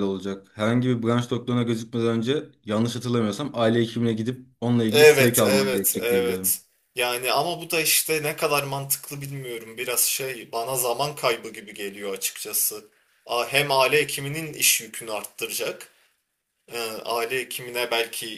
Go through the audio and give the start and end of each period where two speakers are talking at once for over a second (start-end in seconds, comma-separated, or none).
4.9-6.6